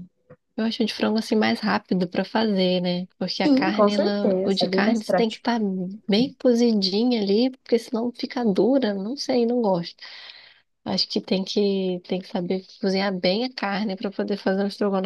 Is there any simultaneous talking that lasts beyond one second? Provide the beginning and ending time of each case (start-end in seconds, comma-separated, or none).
3.4-5.5